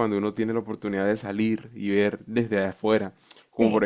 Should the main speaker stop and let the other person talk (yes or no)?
no